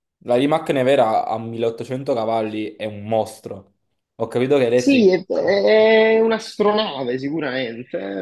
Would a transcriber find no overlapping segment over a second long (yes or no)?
yes